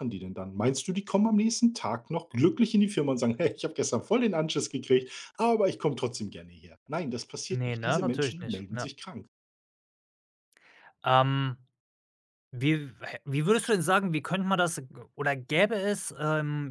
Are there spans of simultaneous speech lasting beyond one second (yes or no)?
yes